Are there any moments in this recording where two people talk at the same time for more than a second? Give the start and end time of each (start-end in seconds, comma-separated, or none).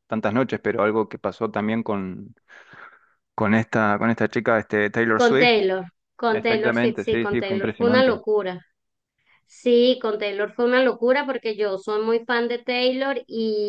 6.3-8.2